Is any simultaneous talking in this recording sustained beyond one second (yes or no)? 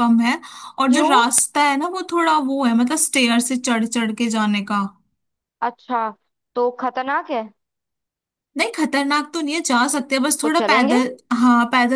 no